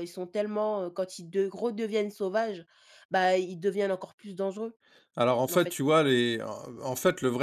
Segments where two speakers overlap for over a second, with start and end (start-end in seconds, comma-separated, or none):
none